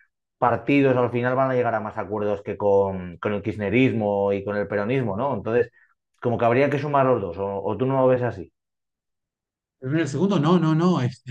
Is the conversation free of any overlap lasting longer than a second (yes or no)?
yes